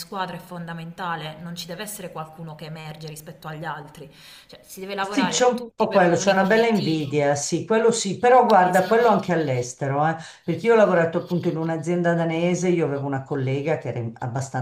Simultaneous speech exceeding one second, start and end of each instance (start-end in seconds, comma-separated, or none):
5.0-7.2